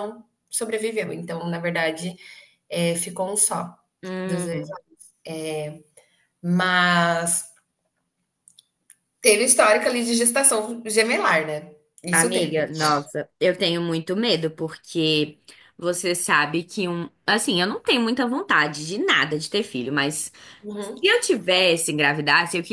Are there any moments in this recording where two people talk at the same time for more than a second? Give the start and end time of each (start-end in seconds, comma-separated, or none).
none